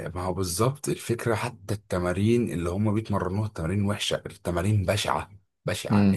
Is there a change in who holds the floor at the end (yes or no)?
no